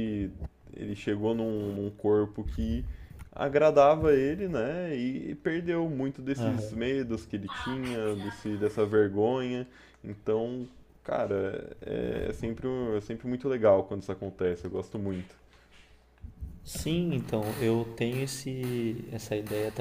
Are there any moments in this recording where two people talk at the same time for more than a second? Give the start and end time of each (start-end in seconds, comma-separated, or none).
none